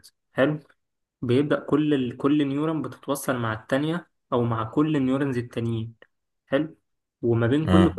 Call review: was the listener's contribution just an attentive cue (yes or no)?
yes